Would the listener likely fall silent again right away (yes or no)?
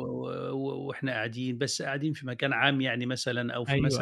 yes